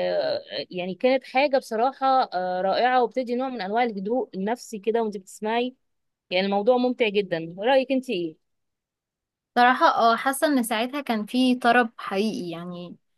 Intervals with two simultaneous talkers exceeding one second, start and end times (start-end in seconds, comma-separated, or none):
none